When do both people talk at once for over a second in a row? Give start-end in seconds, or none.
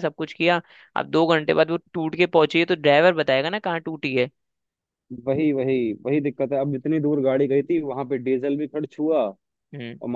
none